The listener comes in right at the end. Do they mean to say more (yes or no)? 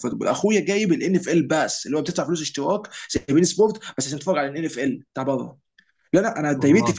no